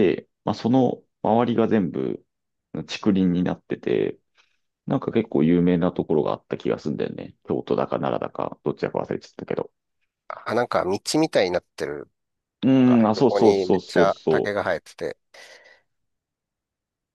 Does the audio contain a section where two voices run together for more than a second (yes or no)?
yes